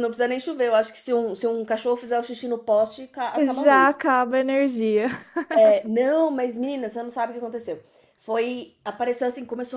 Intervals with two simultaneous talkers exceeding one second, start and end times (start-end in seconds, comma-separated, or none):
none